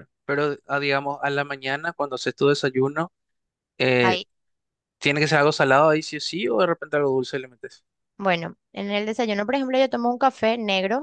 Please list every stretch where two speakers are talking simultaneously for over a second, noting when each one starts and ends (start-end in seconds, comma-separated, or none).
none